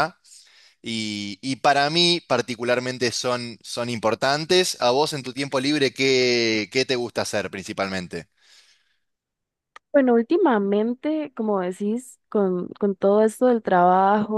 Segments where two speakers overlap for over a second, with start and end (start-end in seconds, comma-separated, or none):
none